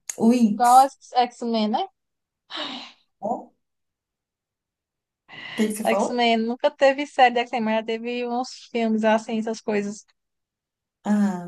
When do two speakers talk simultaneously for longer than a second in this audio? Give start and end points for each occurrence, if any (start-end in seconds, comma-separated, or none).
none